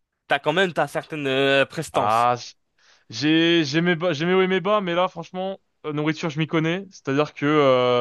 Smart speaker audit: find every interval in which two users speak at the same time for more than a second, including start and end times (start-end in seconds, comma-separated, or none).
none